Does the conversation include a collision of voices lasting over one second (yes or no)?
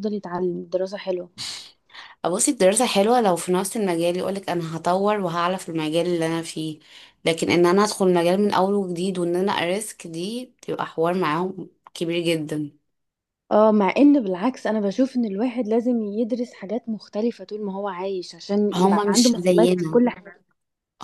yes